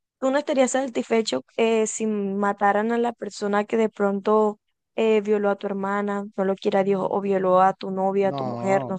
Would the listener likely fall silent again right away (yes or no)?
no